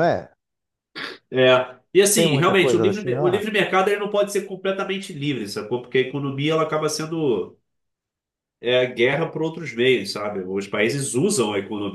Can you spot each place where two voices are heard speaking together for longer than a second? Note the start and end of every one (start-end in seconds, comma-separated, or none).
2.0-3.4